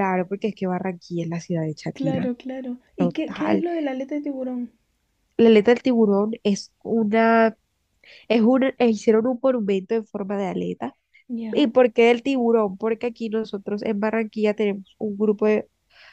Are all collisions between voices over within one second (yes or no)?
yes